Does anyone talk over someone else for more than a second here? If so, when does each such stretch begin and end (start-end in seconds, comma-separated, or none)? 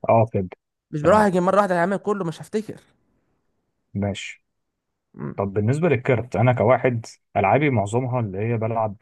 none